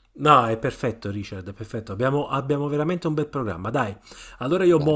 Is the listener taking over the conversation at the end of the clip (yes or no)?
no